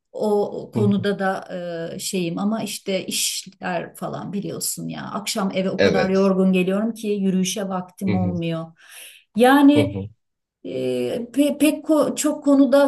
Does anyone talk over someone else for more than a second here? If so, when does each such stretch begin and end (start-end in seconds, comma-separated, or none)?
none